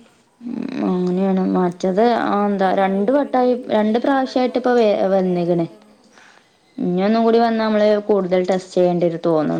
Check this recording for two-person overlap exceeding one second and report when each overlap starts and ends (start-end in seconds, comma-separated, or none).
2.3-5.7